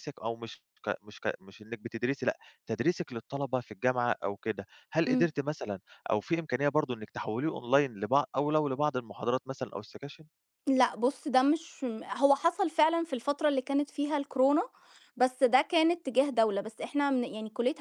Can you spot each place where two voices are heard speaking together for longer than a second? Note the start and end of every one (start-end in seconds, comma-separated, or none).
none